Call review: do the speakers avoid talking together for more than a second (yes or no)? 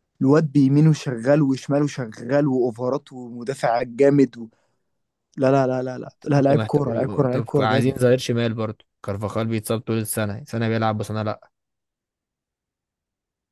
no